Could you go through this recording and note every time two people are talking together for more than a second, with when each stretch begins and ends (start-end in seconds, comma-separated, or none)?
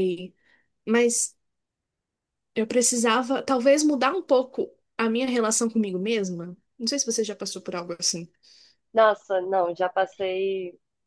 none